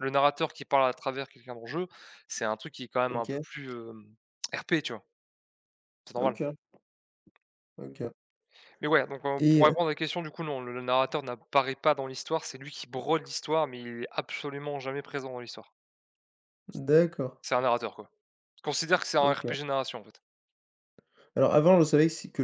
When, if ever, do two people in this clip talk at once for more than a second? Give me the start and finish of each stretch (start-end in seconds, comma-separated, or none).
none